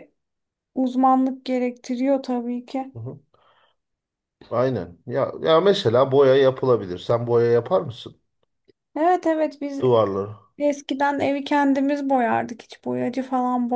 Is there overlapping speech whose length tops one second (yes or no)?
no